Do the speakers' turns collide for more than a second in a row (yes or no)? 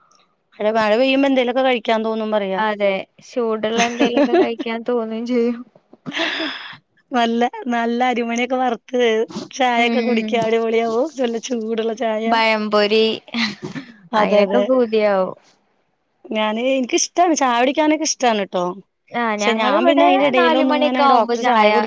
yes